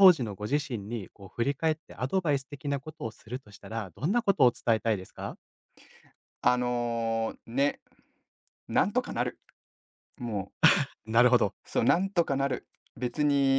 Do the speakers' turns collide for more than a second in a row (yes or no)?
no